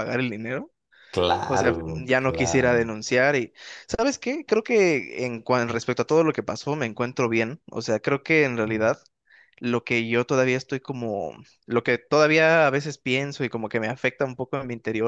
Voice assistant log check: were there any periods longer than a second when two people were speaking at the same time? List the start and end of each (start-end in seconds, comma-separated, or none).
1.5-3.0